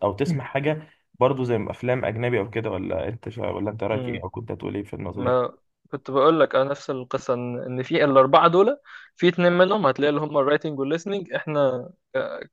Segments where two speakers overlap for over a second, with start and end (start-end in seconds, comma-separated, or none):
none